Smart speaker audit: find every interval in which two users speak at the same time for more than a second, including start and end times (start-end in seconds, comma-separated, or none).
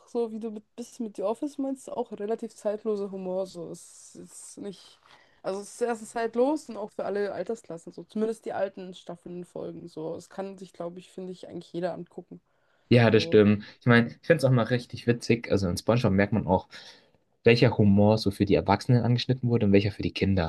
none